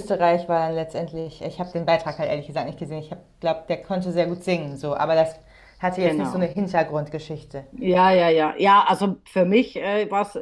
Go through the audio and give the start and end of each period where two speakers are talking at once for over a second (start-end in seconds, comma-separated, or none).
none